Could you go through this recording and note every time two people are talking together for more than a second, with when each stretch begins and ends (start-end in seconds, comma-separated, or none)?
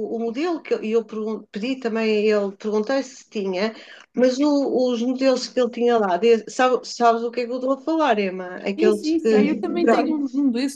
8.8-10.2